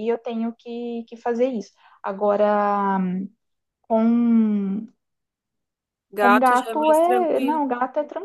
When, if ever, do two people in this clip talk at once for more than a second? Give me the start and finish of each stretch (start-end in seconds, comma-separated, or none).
6.2-7.6